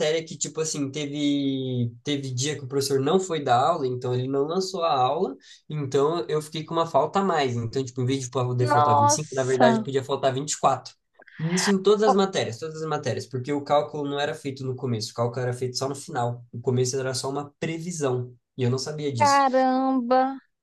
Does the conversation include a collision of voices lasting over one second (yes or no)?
yes